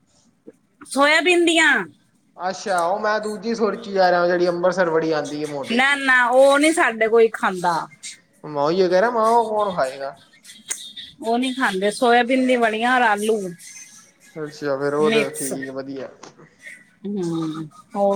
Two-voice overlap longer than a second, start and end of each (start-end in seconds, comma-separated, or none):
none